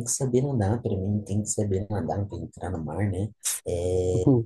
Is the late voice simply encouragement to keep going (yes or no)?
yes